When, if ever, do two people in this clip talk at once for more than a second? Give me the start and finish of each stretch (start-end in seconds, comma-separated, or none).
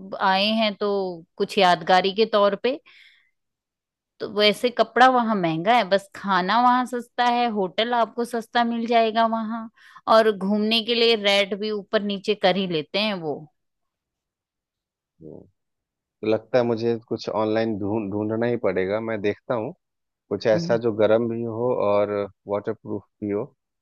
none